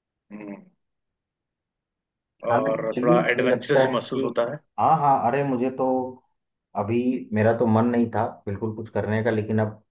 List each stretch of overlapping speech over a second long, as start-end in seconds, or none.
2.5-4.3